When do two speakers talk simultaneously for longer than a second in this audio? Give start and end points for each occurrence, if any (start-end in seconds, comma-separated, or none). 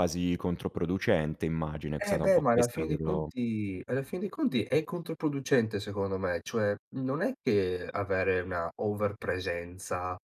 2.0-3.3